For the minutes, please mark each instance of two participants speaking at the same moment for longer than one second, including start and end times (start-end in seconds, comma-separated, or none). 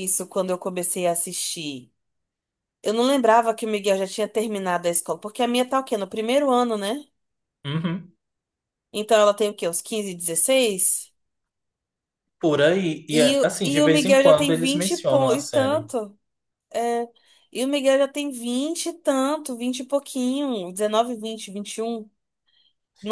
13.1-15.9